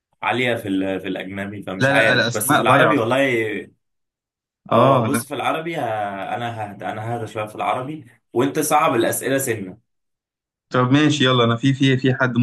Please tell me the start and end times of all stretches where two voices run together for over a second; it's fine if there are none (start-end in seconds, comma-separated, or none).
1.8-3.0